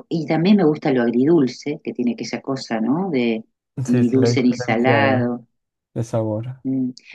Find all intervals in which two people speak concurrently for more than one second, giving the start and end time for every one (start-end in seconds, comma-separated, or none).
3.9-5.3